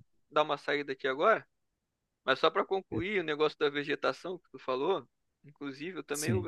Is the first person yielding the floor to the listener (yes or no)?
no